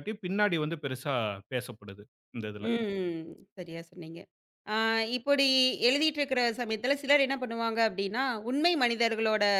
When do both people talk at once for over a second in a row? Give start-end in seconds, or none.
none